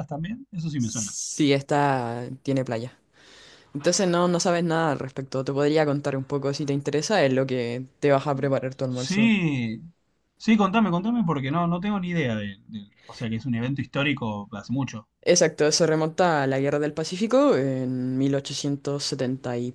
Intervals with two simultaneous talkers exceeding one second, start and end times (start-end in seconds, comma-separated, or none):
none